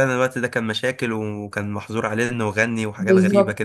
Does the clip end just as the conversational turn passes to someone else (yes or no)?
yes